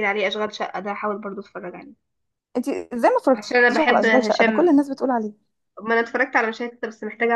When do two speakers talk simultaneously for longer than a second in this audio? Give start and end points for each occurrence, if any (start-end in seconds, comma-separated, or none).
3.4-4.7